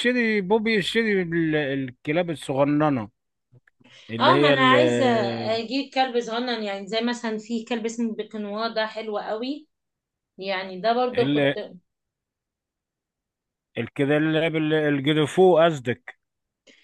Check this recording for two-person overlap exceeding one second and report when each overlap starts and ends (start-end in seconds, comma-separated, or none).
none